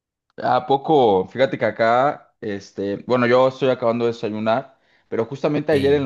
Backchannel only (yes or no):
yes